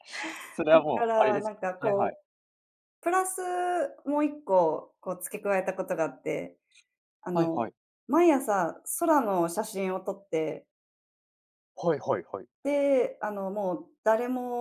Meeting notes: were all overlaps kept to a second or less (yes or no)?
no